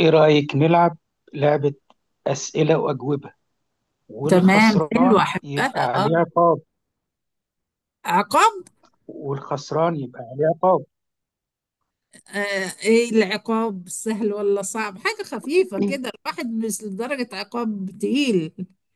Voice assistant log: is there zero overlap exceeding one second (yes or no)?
no